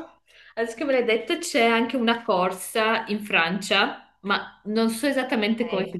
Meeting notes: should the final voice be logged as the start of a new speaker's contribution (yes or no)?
no